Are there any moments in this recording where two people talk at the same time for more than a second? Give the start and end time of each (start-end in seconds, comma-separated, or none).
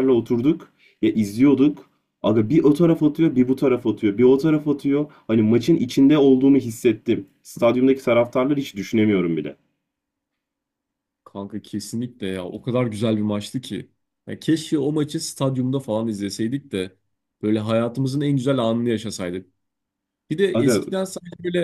none